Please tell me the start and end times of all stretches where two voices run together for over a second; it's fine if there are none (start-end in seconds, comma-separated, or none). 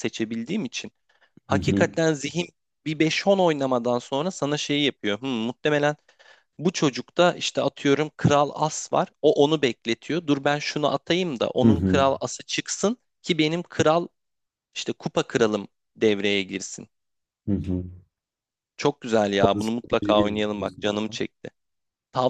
19.4-21.2